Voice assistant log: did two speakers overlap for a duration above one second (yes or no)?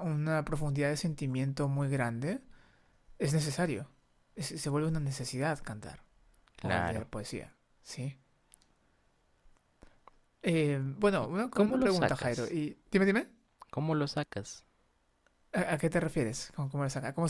yes